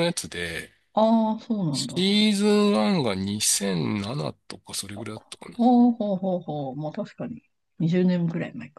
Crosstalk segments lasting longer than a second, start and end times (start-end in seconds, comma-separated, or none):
none